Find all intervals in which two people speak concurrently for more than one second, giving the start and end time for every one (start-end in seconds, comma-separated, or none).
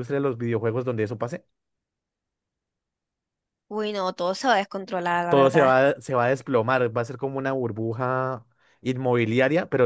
none